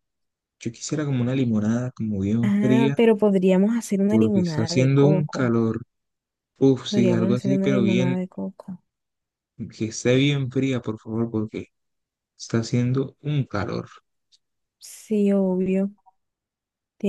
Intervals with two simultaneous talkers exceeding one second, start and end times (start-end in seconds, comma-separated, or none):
4.1-5.5, 6.9-8.2